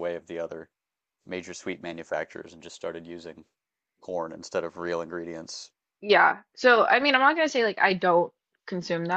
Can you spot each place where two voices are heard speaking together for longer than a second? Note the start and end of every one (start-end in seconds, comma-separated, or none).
none